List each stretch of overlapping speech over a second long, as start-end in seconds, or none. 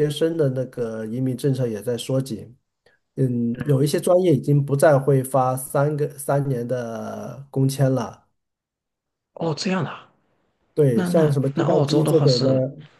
10.9-12.5